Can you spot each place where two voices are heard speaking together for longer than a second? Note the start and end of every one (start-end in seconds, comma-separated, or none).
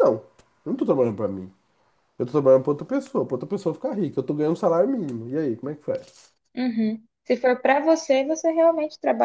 none